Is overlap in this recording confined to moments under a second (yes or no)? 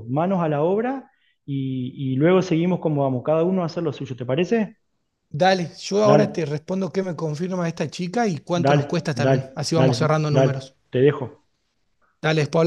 no